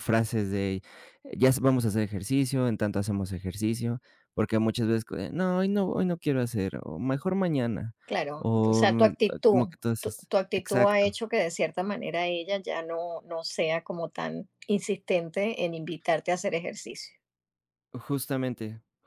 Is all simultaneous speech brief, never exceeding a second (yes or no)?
no